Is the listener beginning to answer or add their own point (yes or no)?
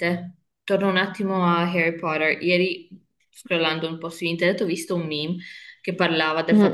no